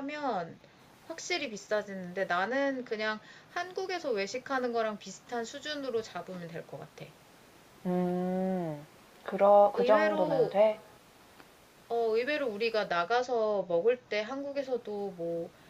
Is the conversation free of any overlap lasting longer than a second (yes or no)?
yes